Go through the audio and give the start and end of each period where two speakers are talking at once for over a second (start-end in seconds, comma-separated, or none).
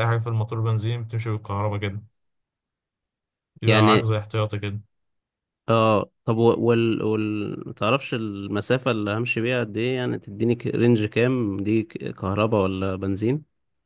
none